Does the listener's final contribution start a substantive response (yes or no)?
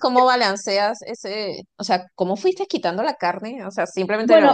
yes